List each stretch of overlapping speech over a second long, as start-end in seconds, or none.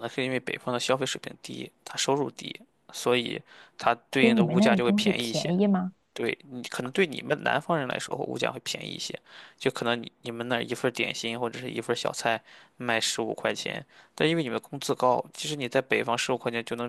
4.2-5.5